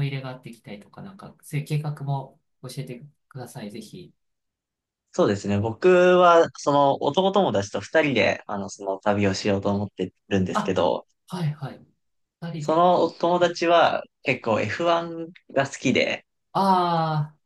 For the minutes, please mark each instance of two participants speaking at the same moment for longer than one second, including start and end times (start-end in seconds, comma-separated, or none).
none